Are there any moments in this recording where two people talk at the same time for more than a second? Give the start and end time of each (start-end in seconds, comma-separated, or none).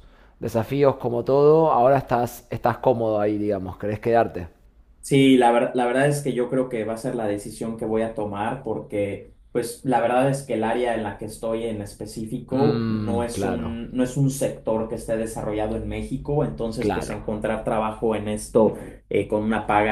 12.5-13.8